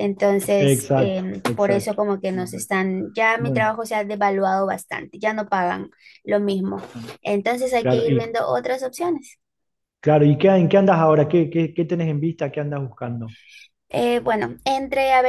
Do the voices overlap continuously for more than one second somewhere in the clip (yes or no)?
yes